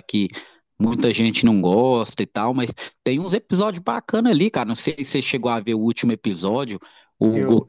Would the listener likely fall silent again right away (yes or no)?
yes